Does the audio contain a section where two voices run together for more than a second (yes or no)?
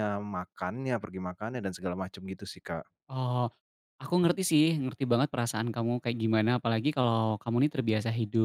no